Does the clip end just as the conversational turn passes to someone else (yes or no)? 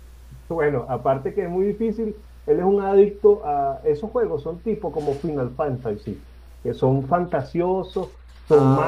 no